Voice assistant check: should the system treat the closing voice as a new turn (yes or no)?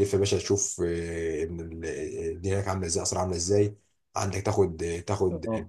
no